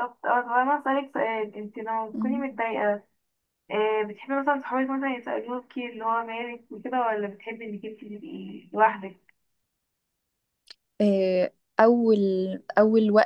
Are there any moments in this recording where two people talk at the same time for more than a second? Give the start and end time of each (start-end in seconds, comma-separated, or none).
none